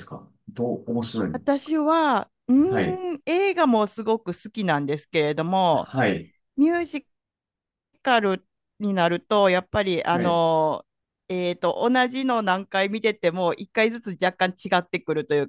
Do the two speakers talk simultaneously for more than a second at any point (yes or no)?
no